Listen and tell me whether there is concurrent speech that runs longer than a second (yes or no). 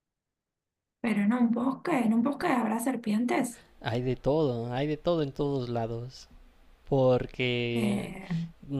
no